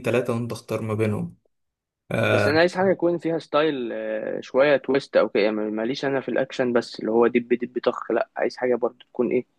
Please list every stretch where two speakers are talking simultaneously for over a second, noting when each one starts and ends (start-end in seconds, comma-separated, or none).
none